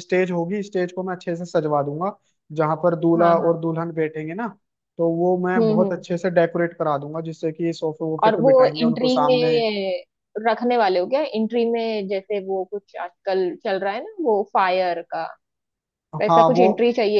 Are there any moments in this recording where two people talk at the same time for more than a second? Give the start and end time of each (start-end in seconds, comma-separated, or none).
8.2-9.6